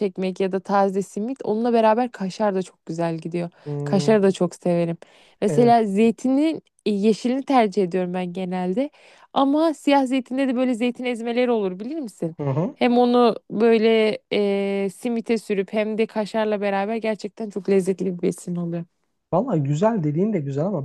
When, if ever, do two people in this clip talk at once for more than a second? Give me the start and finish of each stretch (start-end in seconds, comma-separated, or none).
none